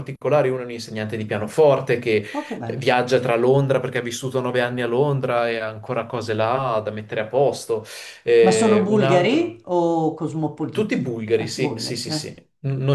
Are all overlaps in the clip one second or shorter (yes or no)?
no